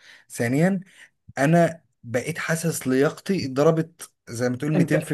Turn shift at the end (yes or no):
yes